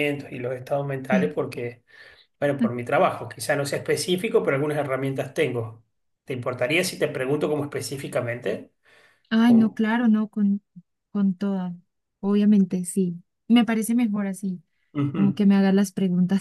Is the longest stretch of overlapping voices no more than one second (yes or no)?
yes